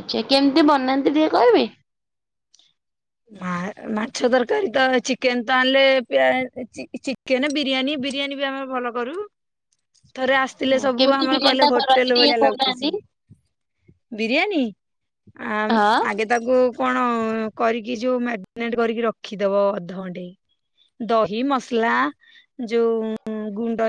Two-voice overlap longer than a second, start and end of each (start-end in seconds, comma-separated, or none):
11.0-12.9